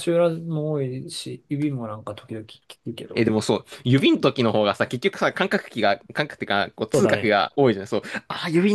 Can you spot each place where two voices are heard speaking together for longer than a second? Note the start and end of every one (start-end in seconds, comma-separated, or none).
none